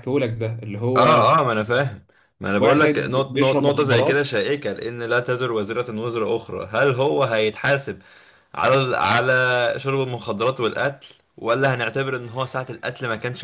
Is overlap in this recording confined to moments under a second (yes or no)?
no